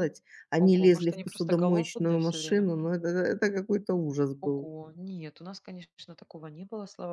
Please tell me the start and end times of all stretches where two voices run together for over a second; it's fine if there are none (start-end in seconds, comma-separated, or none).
0.6-2.9